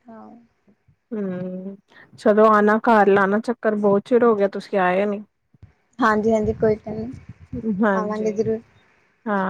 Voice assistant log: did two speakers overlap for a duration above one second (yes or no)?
no